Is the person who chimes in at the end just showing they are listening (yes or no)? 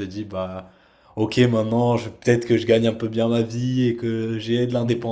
yes